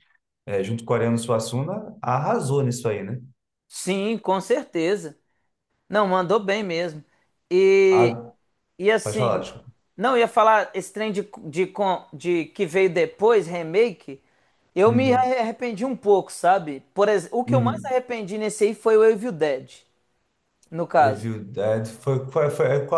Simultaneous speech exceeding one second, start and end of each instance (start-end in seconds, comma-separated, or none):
none